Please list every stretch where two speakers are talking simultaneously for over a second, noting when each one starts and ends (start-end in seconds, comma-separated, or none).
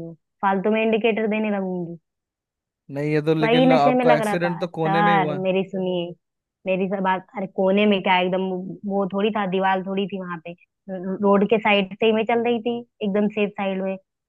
3.4-5.5